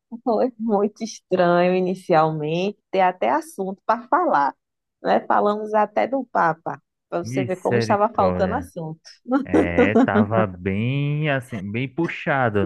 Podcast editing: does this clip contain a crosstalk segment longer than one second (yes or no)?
yes